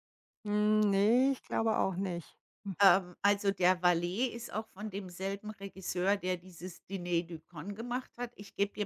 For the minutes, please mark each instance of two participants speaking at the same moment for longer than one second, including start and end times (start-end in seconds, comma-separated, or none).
none